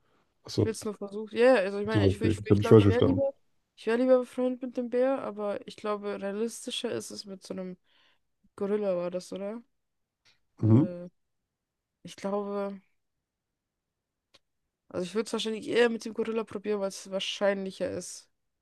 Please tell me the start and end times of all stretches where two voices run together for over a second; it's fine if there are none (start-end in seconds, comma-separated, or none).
1.9-3.2